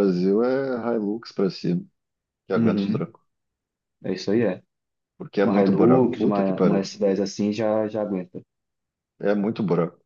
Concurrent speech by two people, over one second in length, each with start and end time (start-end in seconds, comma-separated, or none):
5.4-6.9